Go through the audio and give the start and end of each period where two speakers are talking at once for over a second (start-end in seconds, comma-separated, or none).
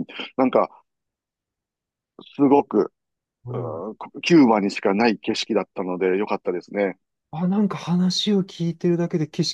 none